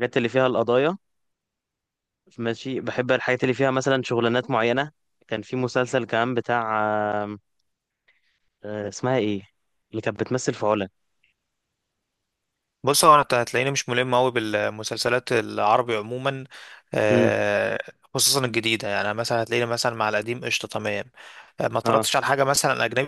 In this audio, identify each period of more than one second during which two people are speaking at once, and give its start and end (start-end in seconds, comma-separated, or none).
none